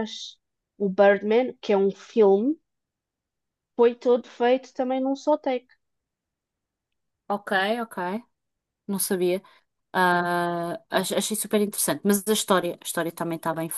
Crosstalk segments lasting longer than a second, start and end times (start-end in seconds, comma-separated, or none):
none